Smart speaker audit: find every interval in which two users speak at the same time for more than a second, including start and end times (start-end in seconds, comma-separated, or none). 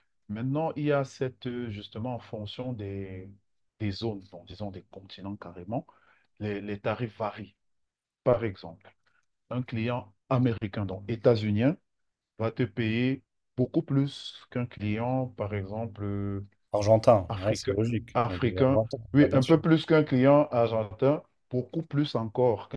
17.3-19.6